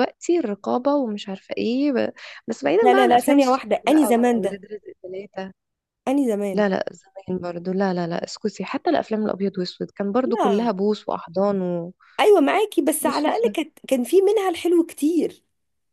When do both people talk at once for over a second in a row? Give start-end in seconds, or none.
2.8-4.6